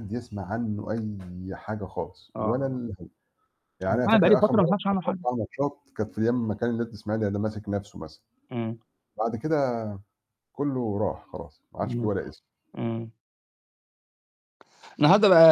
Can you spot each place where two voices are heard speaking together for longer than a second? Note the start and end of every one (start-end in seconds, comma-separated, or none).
3.9-5.2